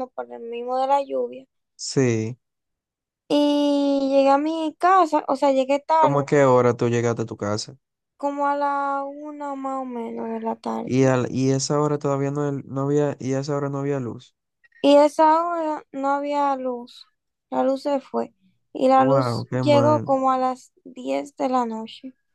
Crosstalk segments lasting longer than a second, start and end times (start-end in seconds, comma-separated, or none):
18.9-20.1